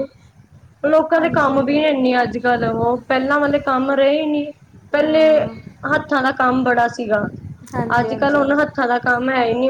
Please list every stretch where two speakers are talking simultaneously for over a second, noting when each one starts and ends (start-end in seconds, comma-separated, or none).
none